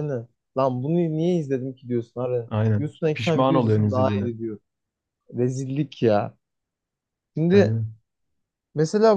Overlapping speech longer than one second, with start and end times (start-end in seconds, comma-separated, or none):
2.5-4.3